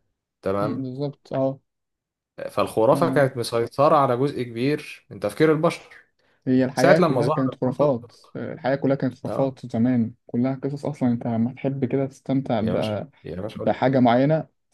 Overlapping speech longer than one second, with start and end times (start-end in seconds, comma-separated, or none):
6.8-8.1